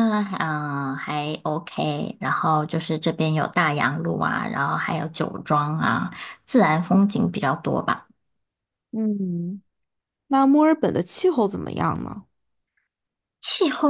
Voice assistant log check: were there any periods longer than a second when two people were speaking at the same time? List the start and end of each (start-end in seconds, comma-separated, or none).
none